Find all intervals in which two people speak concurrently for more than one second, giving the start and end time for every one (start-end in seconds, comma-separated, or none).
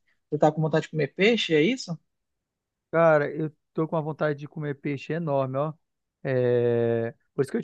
none